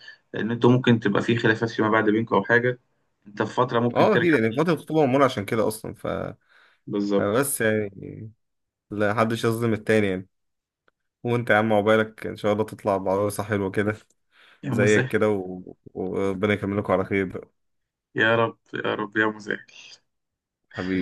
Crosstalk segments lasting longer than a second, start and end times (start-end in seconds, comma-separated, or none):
none